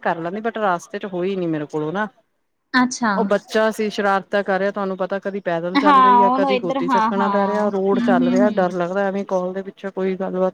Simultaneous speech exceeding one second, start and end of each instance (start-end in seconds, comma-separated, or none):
5.8-8.7